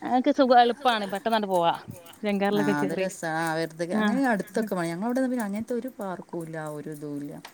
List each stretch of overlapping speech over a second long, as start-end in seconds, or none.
none